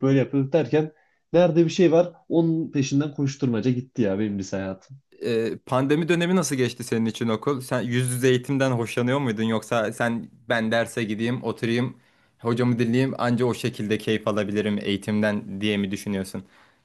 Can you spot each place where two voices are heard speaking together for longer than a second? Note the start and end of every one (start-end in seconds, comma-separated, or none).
none